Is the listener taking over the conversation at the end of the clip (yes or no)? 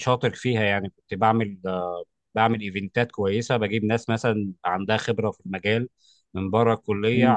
no